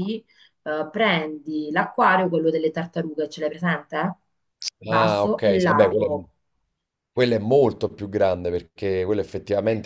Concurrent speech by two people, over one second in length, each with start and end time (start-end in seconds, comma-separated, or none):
4.9-6.2